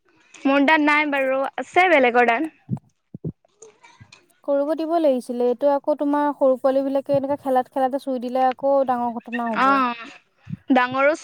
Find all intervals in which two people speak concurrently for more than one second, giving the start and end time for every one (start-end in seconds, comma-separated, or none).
none